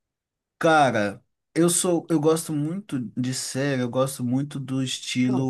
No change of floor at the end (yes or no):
yes